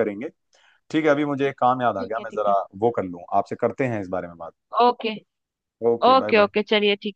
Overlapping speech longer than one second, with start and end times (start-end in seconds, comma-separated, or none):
none